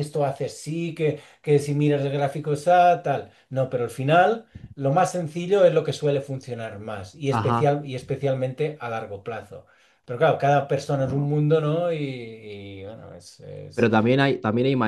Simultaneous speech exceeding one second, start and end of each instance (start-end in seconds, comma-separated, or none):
none